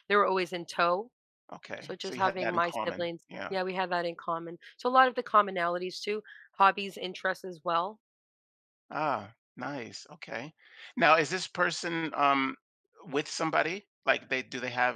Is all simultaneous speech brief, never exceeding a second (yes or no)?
no